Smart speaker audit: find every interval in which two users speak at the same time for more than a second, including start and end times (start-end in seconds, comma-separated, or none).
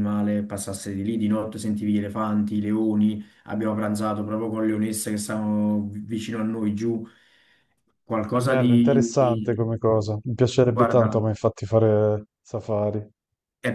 8.3-9.7